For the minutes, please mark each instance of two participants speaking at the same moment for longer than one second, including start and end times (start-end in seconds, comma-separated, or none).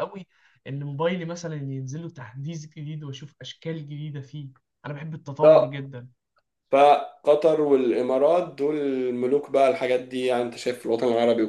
none